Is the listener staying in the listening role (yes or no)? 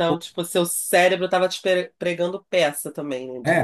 no